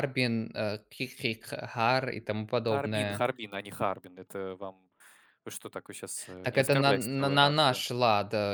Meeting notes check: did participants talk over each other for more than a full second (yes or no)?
yes